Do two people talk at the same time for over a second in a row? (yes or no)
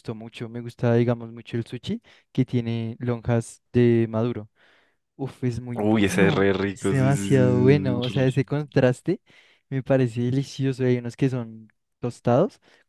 yes